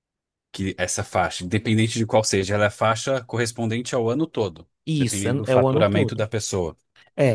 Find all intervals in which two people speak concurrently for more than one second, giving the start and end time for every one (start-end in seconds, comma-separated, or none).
4.8-6.3